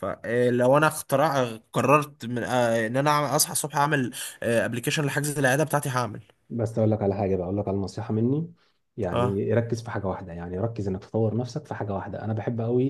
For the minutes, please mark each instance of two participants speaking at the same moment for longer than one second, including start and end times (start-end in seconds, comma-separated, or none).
none